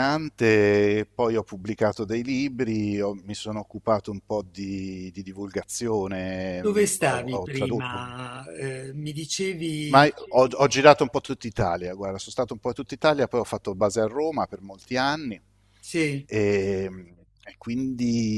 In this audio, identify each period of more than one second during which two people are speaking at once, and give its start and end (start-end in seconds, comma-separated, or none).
6.6-8.1